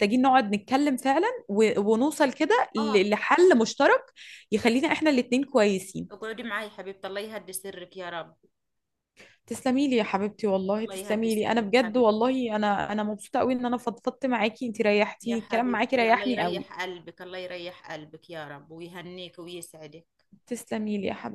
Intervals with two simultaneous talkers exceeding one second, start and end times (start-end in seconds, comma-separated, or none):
10.8-12.1, 15.2-16.7